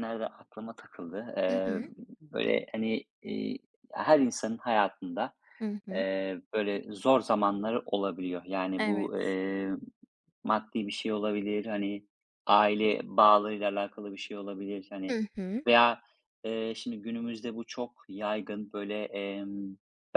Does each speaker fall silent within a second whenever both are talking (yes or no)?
yes